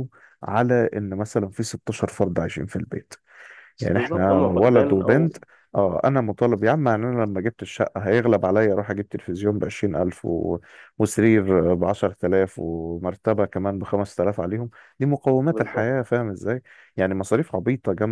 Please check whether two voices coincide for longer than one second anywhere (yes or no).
yes